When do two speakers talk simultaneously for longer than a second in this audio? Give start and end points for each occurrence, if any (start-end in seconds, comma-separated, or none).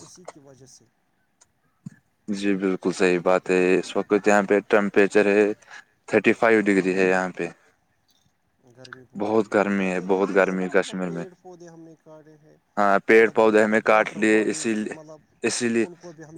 9.5-11.2, 13.2-15.0